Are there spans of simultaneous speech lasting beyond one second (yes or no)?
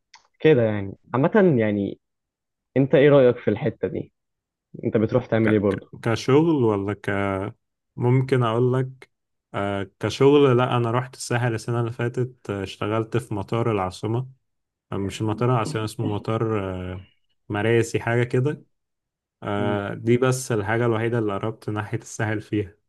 no